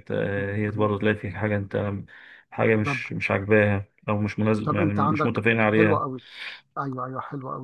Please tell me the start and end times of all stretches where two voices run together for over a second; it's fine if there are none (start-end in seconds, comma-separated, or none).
4.6-6.0